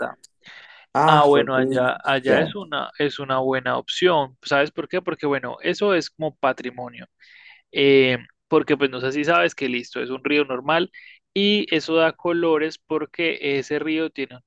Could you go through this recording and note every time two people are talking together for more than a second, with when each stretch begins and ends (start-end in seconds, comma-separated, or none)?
1.1-2.6